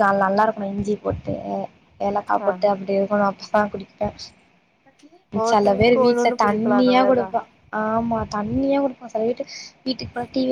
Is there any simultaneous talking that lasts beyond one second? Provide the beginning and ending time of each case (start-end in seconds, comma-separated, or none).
5.5-7.3